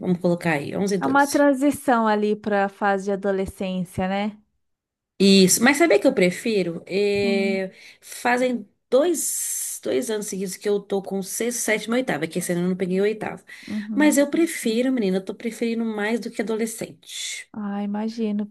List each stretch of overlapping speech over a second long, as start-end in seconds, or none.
none